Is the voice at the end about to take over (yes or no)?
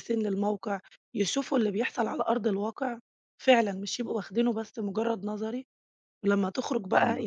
no